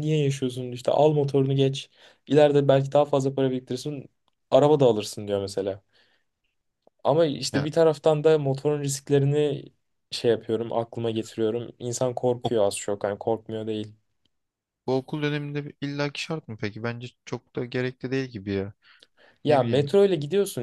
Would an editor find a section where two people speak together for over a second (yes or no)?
no